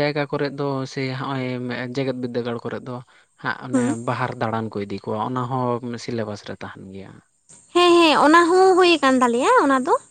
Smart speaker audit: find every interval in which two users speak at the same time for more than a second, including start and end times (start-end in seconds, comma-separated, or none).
none